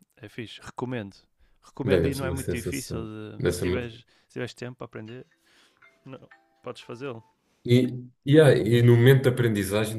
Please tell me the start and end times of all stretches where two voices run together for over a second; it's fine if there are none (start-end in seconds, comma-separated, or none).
1.8-4.0